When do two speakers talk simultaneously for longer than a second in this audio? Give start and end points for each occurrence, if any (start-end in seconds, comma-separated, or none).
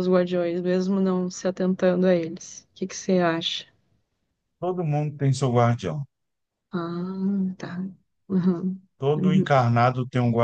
none